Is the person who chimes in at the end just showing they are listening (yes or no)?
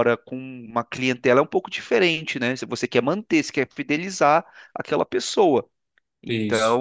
yes